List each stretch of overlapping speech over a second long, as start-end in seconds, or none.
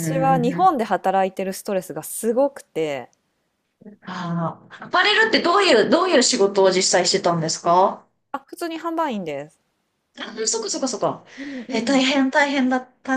none